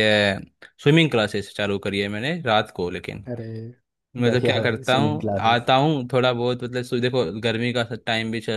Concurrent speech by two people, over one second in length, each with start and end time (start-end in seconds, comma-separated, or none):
4.3-5.7